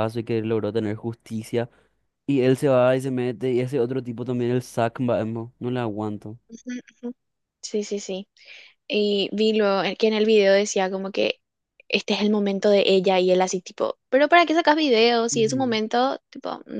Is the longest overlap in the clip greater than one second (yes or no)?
no